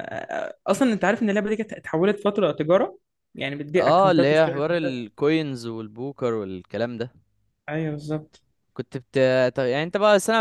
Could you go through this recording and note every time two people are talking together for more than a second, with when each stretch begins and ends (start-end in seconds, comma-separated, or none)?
3.8-5.1